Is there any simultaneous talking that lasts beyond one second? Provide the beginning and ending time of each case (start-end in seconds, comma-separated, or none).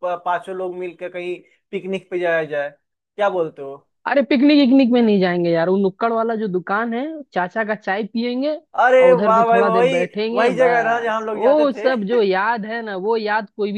9.0-11.9